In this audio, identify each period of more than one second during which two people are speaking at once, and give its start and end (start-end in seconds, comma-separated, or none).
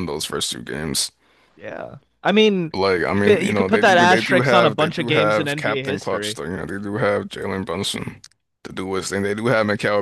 3.1-6.4